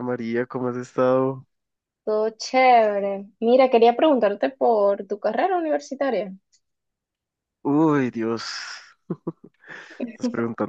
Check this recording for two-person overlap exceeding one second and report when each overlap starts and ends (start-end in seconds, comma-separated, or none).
none